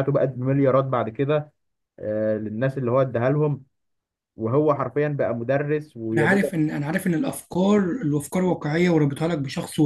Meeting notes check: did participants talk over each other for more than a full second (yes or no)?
no